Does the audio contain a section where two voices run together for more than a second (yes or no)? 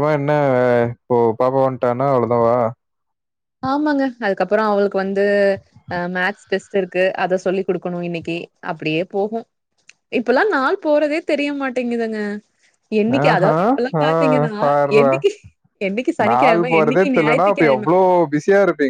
yes